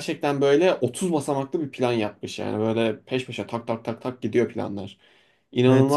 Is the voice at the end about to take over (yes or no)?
yes